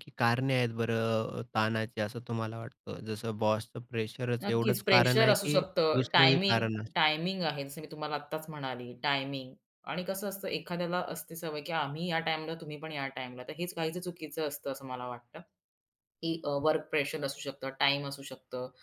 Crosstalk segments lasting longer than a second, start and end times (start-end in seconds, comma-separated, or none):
4.4-7.0